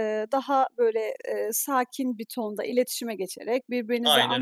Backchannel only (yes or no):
yes